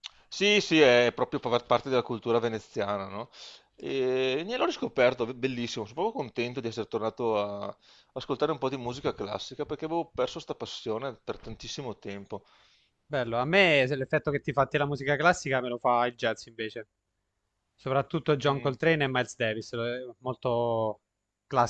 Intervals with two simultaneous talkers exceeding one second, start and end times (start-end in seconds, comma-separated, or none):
none